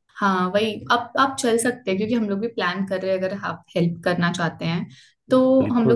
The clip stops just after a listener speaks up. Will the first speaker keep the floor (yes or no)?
yes